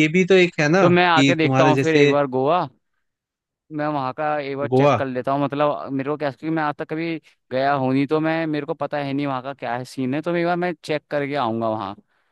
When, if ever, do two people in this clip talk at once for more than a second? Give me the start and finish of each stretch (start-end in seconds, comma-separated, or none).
0.8-2.1